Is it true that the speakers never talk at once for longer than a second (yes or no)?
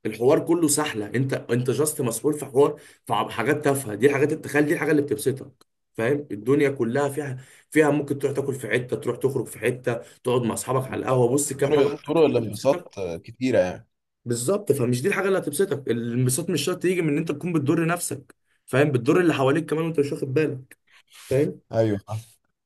no